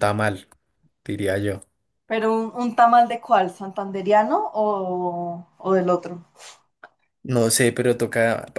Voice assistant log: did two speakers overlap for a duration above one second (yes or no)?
no